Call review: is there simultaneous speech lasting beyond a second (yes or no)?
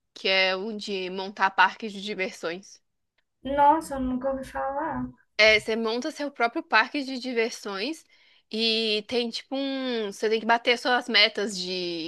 no